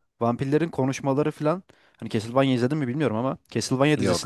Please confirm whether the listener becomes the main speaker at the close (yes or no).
no